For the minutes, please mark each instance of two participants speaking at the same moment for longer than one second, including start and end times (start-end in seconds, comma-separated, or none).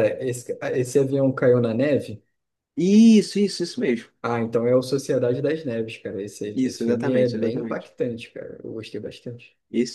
6.5-7.9